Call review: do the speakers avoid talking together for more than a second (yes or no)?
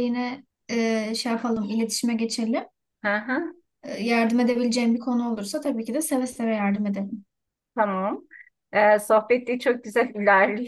yes